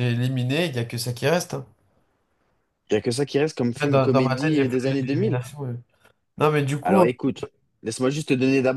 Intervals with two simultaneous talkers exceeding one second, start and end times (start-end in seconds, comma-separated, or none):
3.8-5.4